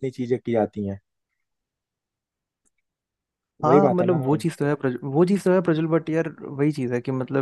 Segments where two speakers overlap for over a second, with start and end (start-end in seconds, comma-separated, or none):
none